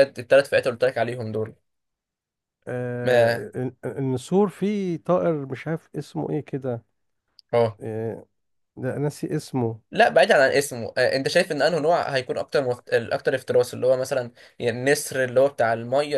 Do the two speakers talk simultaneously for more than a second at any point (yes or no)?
no